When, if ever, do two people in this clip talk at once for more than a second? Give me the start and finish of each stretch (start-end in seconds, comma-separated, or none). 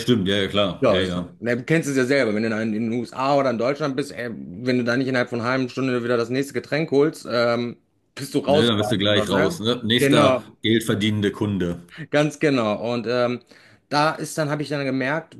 8.5-10.4